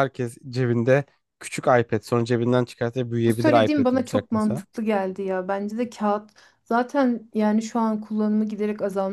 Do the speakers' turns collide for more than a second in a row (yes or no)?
yes